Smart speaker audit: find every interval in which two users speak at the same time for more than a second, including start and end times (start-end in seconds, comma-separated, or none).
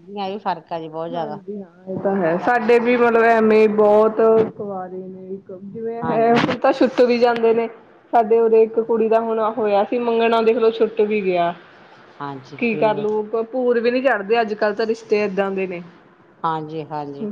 none